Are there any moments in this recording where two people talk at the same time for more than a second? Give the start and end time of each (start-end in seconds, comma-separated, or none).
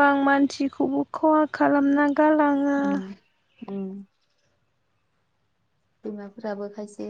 none